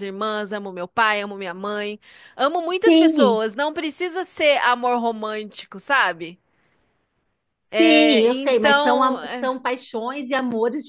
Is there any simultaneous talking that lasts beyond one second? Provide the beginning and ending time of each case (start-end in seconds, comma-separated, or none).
7.8-9.5